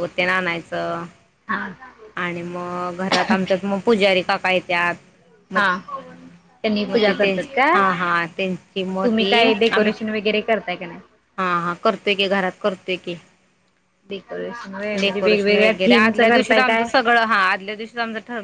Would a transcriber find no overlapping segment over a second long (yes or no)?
no